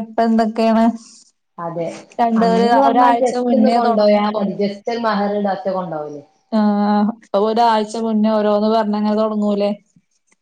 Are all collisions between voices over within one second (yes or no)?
no